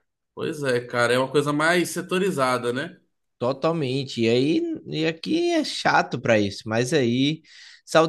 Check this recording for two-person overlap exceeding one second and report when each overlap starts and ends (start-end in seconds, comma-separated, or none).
none